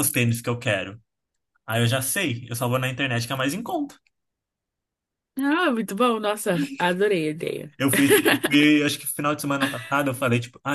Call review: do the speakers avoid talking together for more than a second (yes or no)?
yes